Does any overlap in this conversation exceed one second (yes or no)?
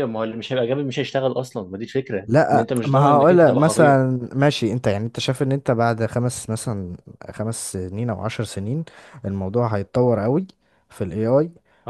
yes